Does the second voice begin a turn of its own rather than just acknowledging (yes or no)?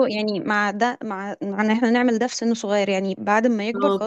no